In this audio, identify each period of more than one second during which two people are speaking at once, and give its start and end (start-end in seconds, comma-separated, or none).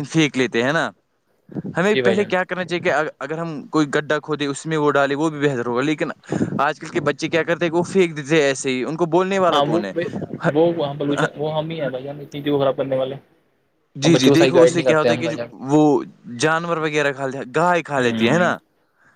14.0-15.3